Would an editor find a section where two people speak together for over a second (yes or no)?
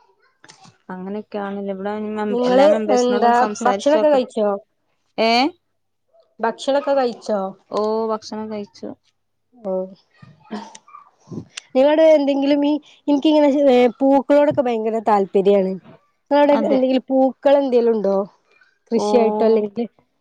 yes